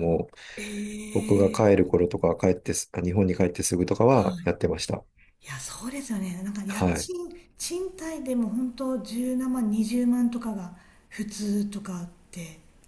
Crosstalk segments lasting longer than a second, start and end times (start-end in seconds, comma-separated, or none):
none